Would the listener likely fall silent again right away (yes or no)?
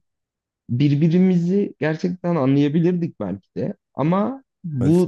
yes